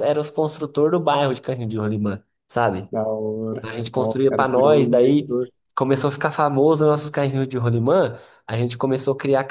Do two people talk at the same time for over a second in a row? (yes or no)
yes